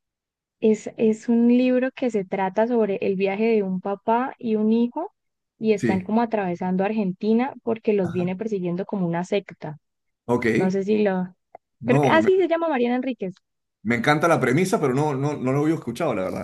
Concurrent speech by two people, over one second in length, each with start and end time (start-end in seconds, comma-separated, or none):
none